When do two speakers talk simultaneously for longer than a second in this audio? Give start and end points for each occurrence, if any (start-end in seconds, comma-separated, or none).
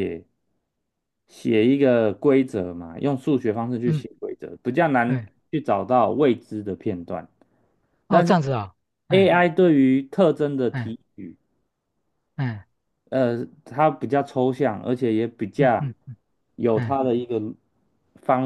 none